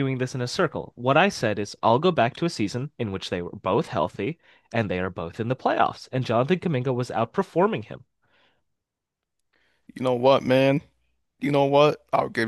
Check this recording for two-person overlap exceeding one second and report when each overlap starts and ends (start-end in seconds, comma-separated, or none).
none